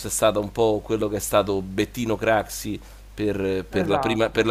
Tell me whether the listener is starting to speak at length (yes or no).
no